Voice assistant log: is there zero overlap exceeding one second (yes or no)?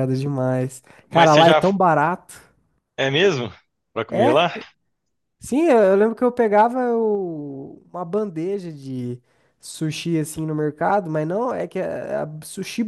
yes